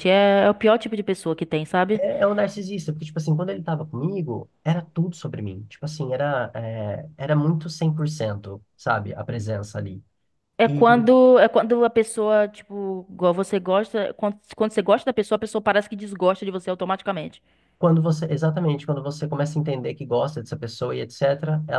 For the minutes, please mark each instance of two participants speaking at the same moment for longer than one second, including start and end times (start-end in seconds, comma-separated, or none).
none